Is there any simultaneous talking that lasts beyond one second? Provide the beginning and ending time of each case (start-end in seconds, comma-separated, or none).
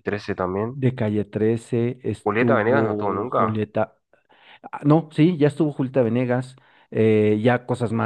2.2-3.6